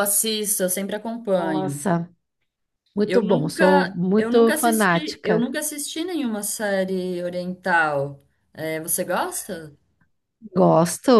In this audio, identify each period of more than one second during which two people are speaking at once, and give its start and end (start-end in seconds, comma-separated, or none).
3.0-5.5